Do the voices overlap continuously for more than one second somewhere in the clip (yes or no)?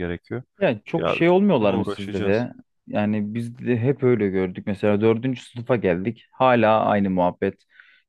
yes